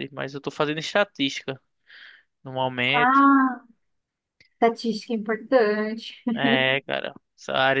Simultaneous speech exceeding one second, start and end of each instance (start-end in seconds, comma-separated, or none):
none